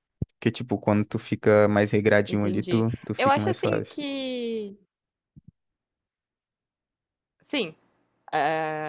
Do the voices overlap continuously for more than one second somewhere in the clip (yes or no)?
yes